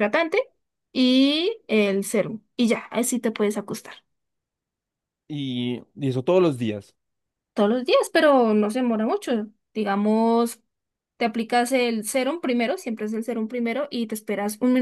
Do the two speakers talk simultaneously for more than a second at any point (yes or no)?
no